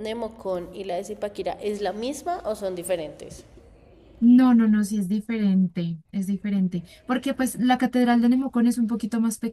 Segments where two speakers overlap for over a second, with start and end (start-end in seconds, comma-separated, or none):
none